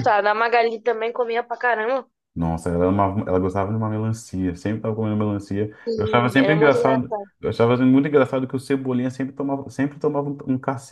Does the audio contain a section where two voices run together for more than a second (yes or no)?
yes